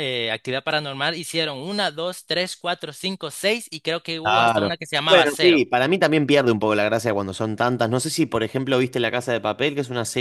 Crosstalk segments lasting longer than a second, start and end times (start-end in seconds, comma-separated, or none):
4.2-5.6